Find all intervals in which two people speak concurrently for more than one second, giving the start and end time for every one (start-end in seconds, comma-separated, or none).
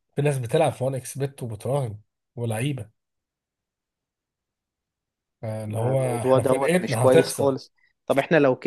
5.7-7.5